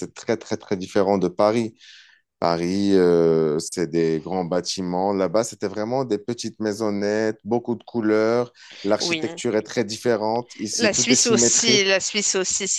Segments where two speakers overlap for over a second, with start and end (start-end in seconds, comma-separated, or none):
10.7-12.0